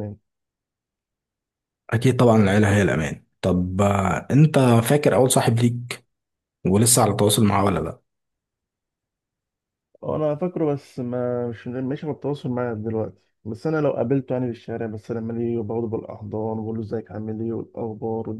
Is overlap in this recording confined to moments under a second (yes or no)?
yes